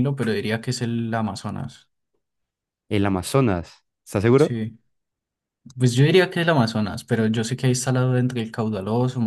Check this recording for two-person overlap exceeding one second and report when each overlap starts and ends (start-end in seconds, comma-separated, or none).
none